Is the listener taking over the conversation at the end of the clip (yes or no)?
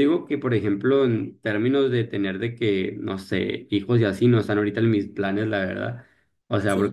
no